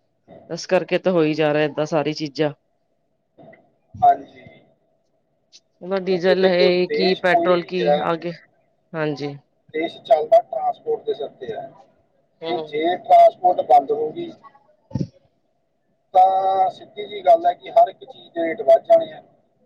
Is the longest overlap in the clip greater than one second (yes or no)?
yes